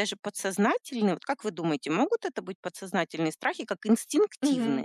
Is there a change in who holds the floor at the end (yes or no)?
yes